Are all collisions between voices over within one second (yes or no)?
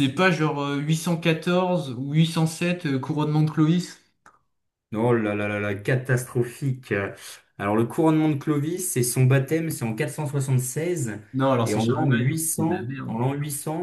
no